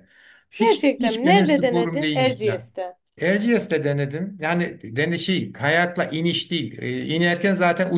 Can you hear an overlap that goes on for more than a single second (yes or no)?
yes